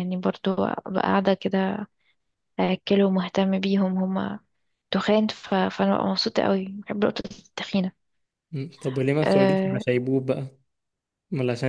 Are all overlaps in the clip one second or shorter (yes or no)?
yes